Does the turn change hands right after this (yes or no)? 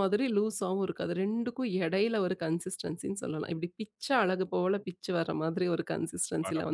yes